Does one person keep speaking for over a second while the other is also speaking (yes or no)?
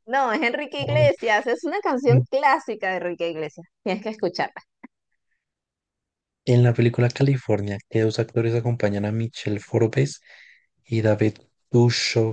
no